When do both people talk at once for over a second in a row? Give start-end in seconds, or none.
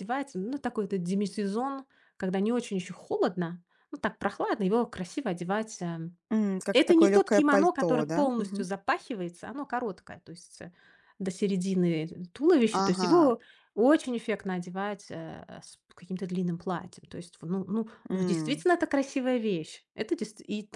6.7-8.7